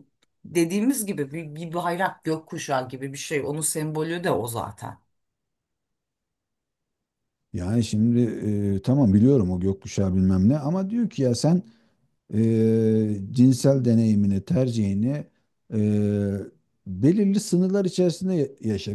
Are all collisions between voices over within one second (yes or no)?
yes